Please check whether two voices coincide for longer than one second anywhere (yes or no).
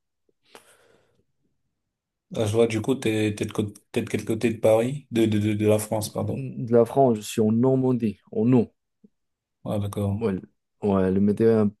no